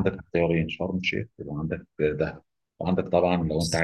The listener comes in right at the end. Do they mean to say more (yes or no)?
no